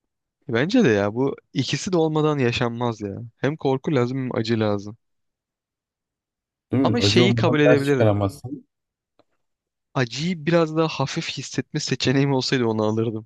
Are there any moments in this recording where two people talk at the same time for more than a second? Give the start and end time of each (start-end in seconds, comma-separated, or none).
6.8-8.2